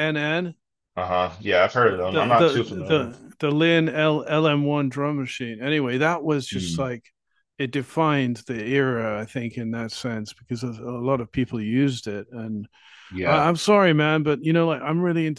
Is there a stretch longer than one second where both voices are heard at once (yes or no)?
yes